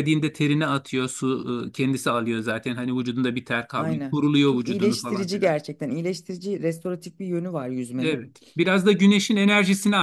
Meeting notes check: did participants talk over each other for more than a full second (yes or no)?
yes